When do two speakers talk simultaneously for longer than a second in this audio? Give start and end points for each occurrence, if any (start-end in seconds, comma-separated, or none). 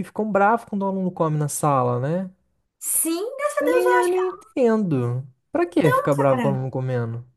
none